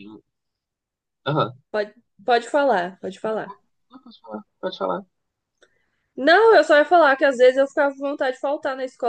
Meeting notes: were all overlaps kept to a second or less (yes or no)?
yes